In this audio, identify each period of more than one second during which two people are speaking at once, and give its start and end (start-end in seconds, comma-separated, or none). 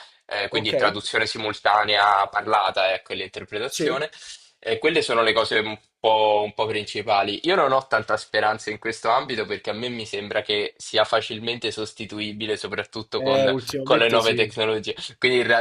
13.2-14.5